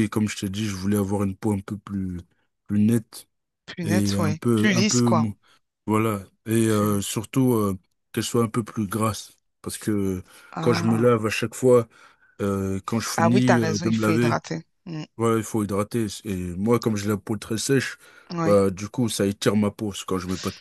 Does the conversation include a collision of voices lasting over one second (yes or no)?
yes